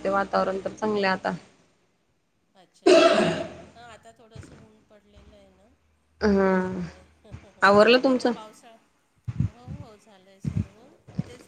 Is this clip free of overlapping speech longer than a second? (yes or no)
yes